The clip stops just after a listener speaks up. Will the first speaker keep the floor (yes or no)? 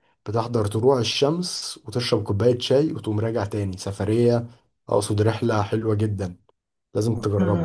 no